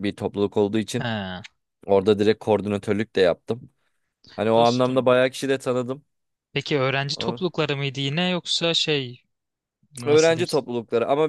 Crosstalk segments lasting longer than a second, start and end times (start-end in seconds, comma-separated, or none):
none